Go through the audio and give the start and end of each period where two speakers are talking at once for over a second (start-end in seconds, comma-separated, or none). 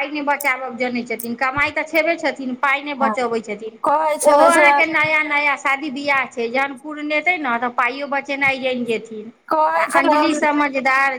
none